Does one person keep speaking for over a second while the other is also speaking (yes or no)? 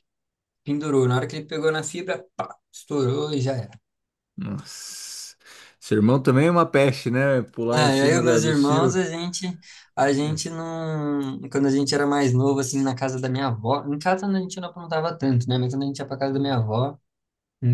yes